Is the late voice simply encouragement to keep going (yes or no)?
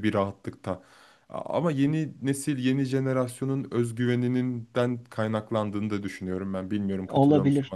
no